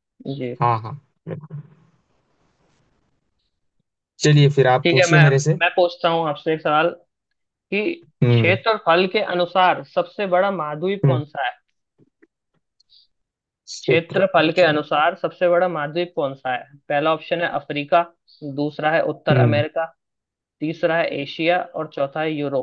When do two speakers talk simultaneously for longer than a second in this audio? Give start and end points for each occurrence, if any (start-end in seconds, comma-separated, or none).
13.8-15.1